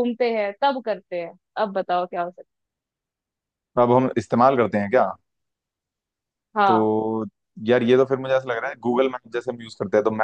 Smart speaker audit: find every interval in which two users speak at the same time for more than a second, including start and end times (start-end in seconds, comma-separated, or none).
none